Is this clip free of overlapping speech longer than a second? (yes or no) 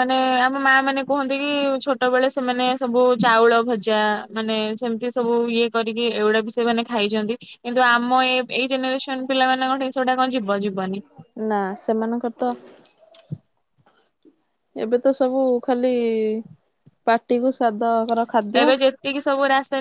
yes